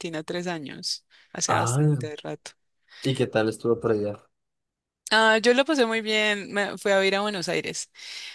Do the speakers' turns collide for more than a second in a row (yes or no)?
no